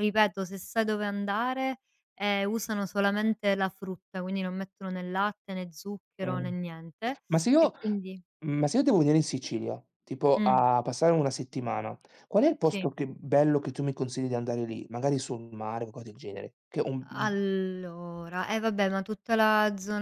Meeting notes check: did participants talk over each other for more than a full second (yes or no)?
no